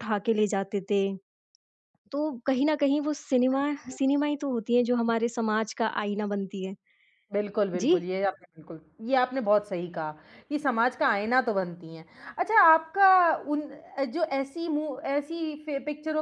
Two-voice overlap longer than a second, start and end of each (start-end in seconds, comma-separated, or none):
none